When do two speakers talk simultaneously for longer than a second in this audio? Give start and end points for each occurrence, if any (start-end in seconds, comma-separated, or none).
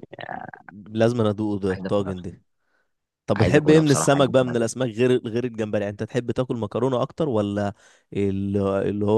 3.4-4.7